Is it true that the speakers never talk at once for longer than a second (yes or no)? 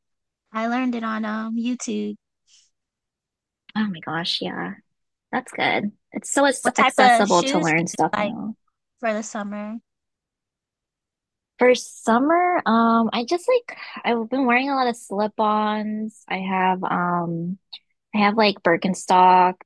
no